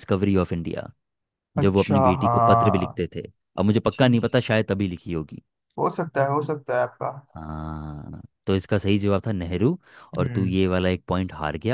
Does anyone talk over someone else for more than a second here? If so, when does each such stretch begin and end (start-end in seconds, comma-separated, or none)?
1.6-3.0